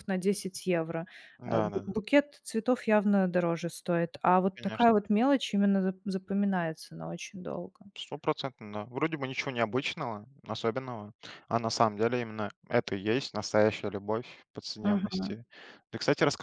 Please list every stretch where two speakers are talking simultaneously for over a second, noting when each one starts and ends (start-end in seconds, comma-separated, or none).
none